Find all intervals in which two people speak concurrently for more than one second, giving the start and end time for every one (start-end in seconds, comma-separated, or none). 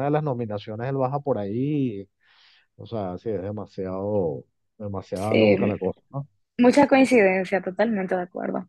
none